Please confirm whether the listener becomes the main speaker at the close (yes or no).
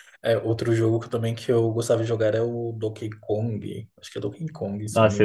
yes